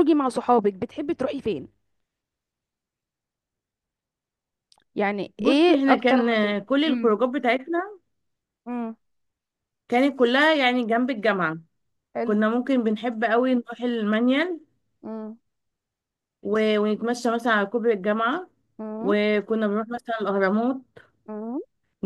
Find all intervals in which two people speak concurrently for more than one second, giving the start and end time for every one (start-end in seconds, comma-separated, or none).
5.4-7.2